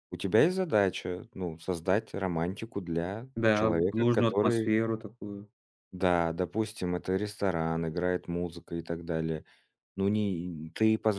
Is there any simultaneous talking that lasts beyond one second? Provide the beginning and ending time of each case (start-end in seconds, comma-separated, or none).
3.4-4.8